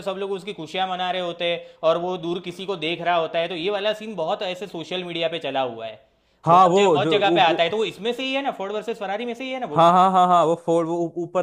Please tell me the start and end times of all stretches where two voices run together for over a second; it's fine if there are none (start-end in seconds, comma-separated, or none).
6.5-7.7